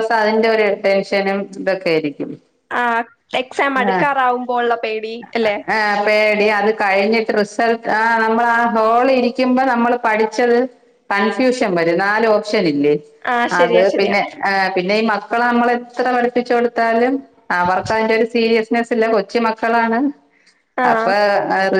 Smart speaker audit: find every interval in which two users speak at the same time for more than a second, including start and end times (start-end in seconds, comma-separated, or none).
none